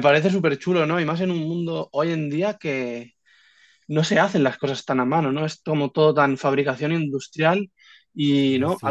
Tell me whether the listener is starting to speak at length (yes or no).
no